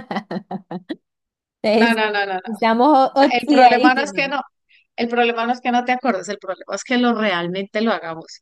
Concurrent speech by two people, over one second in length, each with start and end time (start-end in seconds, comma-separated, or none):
3.1-4.3